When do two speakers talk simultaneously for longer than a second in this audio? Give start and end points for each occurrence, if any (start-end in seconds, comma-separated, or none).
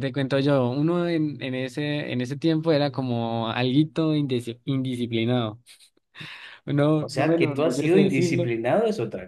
7.0-8.5